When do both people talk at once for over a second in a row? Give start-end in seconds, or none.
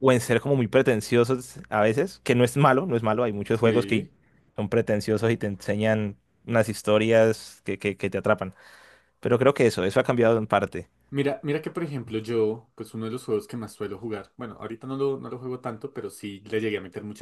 none